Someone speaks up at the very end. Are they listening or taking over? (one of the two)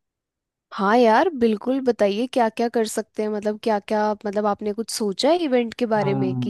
taking over